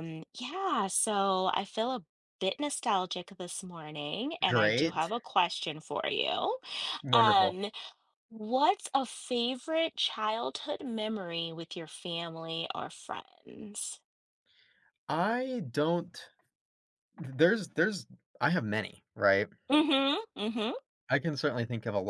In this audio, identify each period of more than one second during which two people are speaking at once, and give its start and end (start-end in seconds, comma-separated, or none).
none